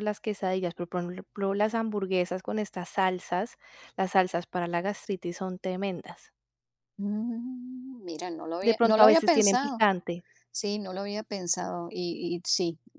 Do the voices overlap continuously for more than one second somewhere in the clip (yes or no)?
yes